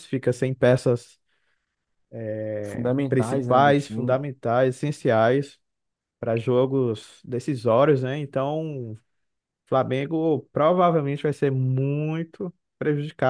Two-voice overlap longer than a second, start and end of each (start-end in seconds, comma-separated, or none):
2.6-4.2